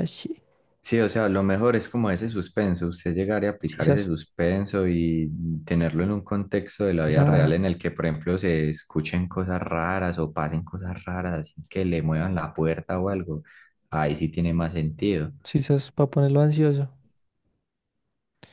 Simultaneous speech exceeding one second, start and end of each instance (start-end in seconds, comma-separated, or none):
none